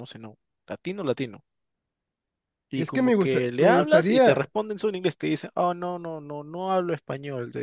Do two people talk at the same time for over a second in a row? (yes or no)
yes